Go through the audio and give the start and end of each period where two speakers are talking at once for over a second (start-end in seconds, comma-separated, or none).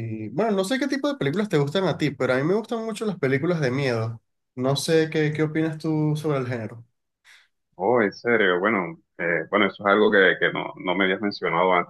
none